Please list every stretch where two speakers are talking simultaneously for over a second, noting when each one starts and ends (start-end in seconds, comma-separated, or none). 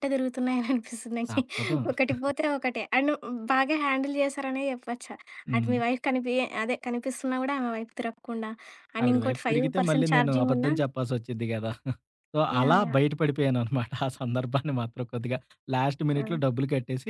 9.0-10.7